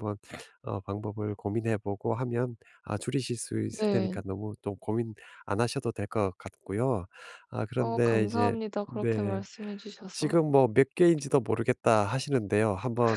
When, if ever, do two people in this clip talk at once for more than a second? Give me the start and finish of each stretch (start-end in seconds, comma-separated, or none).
7.8-9.4